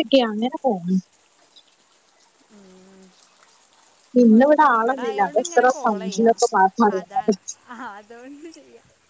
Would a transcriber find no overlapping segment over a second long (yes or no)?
no